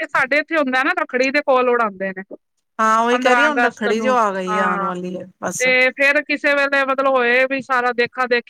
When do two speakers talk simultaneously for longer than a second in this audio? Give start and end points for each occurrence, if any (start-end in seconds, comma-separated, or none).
3.1-4.9